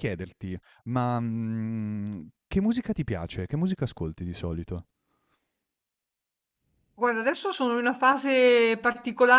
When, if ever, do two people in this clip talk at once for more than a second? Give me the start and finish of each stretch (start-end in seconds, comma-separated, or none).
none